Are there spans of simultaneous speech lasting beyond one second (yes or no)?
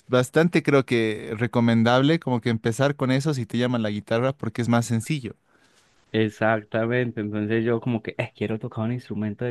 no